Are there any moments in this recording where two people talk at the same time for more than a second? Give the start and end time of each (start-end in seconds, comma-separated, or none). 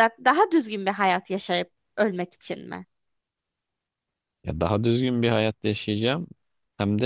none